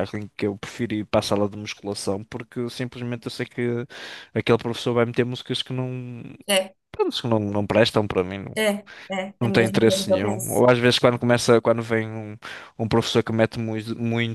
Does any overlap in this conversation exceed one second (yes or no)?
yes